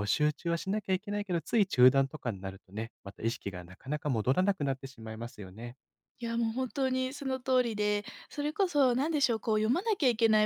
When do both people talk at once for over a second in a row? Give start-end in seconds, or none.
none